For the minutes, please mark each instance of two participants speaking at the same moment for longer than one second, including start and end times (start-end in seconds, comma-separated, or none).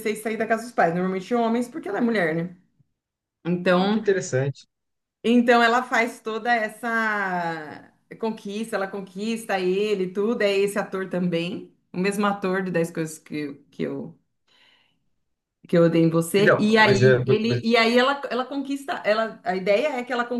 16.4-17.8